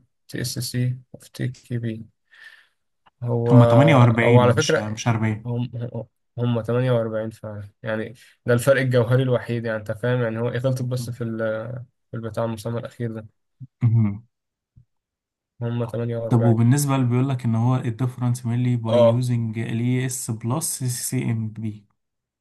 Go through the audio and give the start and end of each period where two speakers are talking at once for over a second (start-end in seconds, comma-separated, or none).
none